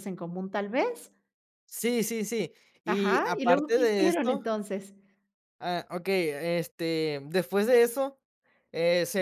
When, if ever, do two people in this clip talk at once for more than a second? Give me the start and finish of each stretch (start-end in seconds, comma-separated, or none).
2.8-4.4